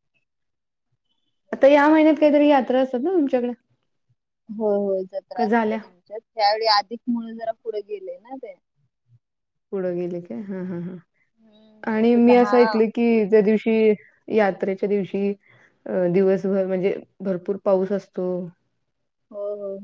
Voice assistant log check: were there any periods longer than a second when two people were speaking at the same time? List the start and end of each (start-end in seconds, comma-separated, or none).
11.2-12.5